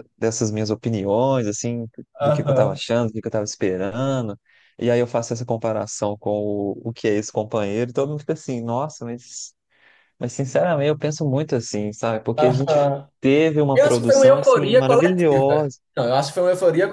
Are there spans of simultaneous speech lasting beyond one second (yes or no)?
yes